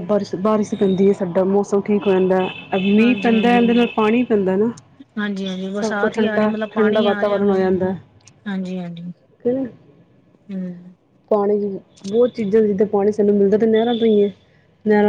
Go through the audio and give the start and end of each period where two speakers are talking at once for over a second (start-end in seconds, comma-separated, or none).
5.8-7.5